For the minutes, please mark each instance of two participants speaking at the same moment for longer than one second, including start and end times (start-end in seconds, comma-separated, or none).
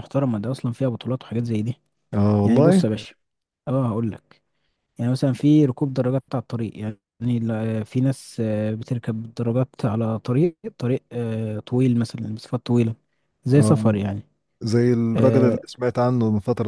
none